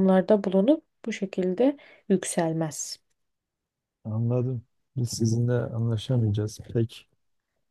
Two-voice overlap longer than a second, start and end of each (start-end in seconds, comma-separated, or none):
none